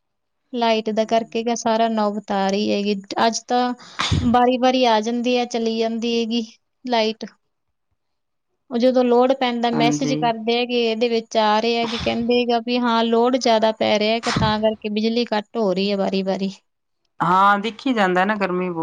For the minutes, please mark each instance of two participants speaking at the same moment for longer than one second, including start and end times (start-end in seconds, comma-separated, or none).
none